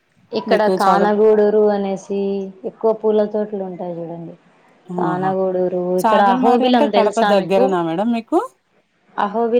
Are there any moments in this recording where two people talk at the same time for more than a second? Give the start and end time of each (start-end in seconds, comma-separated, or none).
6.0-7.6